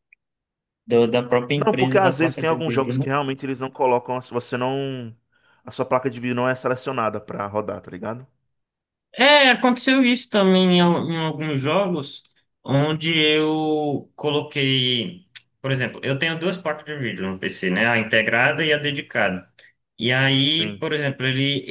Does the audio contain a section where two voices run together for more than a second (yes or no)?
yes